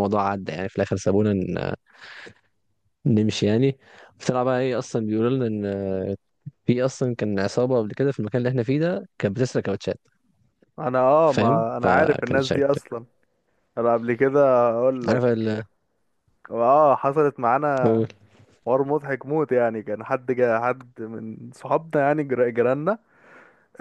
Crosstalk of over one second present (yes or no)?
yes